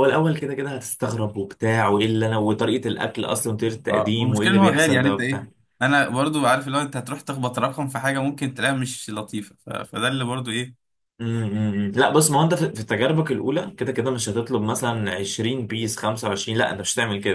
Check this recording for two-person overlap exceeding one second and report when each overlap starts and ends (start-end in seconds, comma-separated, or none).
3.9-5.4